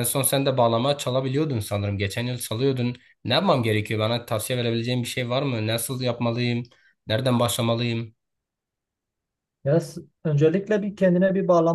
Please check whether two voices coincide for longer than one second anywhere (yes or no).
no